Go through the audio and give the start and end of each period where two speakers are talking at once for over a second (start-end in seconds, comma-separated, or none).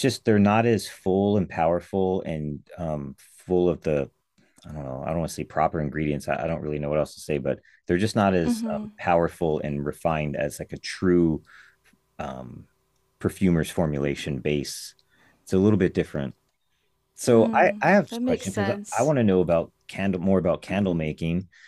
17.3-19.1